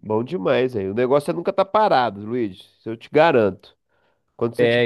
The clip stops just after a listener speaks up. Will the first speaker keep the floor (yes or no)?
yes